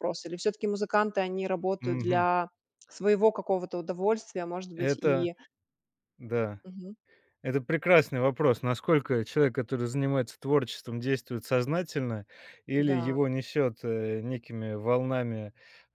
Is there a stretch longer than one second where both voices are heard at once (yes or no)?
no